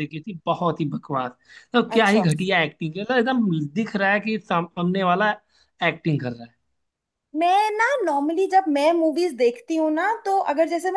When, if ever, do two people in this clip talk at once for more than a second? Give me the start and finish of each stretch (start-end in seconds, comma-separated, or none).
none